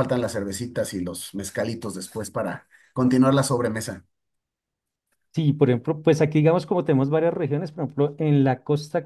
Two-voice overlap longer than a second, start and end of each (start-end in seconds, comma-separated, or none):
none